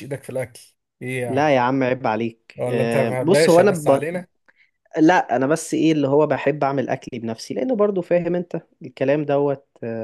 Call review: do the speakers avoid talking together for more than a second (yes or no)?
no